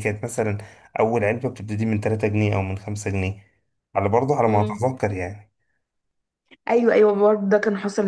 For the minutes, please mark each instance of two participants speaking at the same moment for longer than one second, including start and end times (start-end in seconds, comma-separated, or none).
none